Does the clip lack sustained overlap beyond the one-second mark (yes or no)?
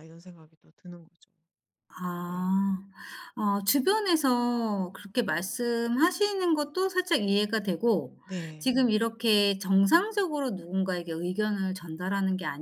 yes